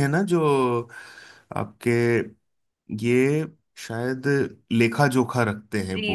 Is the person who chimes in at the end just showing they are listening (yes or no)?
no